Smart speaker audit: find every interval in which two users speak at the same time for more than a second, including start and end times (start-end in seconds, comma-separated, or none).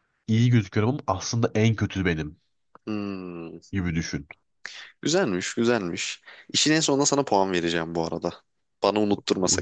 none